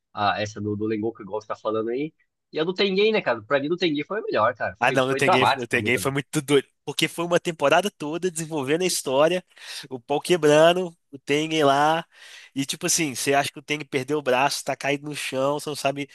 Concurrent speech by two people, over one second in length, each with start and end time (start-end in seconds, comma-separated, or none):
4.8-6.1